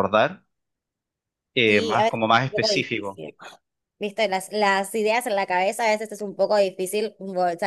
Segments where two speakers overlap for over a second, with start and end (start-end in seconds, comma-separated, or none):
1.7-3.2